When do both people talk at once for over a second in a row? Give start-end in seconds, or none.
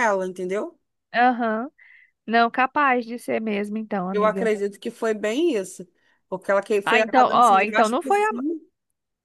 6.8-8.3